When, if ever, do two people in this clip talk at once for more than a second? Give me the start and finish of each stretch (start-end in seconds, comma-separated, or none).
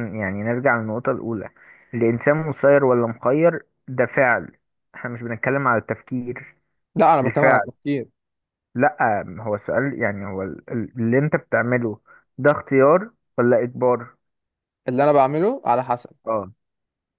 none